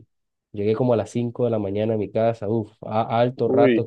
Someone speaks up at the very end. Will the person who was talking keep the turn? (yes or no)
yes